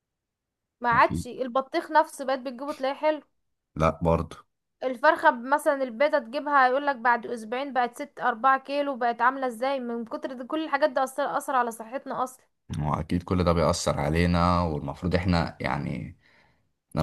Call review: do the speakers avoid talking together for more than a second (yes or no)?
yes